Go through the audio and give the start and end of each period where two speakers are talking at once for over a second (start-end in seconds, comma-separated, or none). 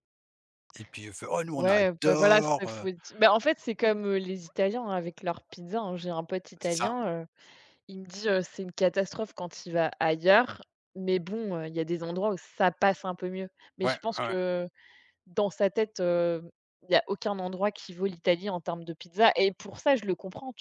1.5-2.9